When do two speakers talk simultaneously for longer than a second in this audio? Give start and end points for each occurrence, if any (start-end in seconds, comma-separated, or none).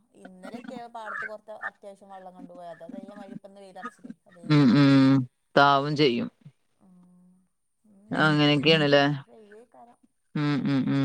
none